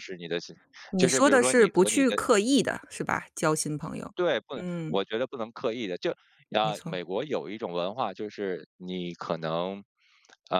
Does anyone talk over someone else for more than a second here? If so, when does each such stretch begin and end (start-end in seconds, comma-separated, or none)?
1.0-2.2